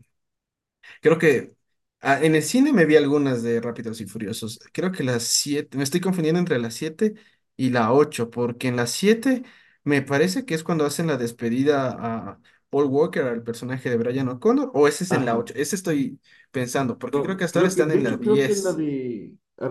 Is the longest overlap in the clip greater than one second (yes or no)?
yes